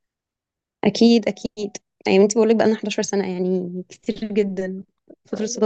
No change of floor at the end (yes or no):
yes